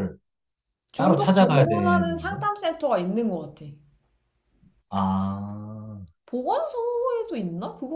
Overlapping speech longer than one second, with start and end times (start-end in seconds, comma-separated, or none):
1.0-2.4